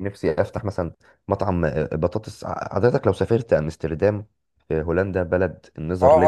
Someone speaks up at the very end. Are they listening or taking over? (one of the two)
taking over